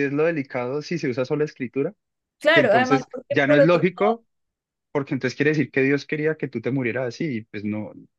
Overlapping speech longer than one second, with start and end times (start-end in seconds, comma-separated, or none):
2.5-4.2